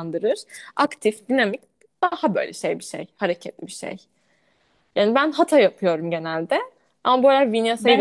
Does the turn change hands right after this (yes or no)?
yes